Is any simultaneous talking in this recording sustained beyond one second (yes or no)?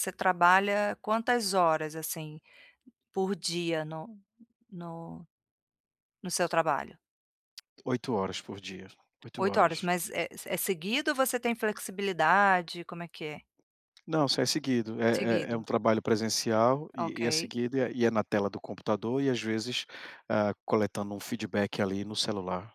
no